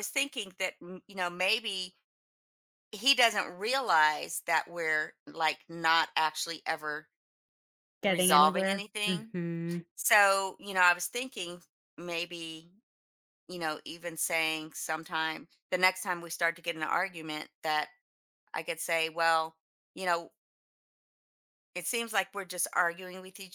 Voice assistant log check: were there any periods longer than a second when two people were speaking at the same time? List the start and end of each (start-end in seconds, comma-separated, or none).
8.0-9.3